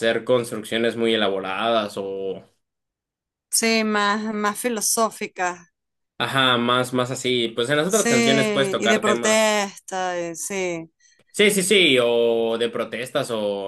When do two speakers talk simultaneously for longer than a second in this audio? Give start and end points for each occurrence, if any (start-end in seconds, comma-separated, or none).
7.9-9.4